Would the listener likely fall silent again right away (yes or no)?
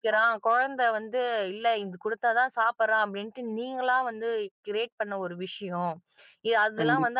yes